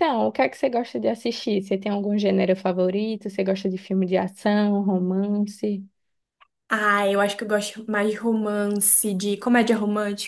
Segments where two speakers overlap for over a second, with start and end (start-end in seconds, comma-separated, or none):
none